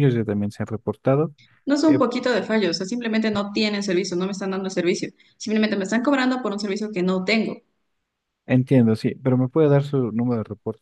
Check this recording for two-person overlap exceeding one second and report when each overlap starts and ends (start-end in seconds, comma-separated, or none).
none